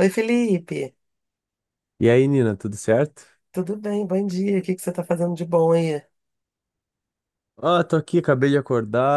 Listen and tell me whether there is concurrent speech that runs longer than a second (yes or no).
no